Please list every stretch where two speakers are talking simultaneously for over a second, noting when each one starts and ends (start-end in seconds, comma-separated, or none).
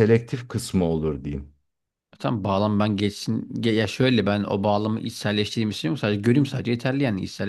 none